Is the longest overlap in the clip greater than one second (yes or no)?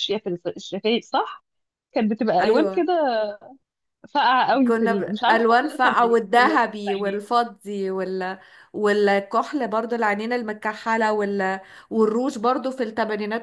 yes